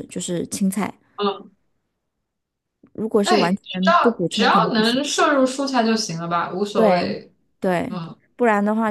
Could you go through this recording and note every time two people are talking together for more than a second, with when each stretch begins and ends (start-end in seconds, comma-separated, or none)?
3.2-5.0